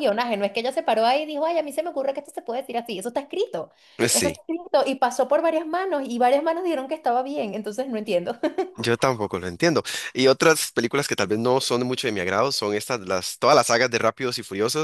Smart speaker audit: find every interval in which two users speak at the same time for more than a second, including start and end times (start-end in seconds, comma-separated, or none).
none